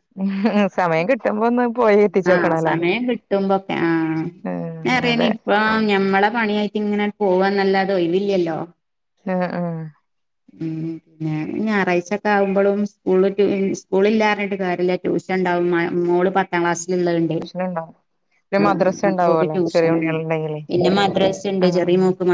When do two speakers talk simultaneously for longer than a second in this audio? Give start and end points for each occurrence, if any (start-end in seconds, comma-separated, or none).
18.6-20.2